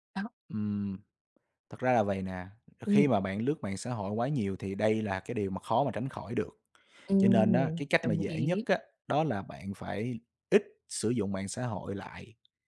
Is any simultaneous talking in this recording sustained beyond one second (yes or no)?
yes